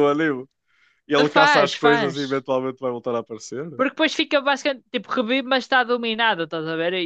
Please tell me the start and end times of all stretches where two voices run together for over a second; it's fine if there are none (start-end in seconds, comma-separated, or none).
1.2-2.5